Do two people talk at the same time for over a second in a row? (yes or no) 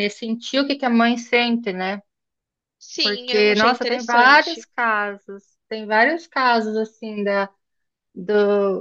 yes